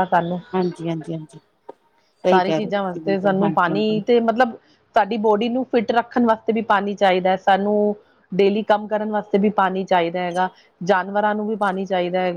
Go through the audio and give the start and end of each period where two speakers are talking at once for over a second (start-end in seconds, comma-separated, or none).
2.3-4.0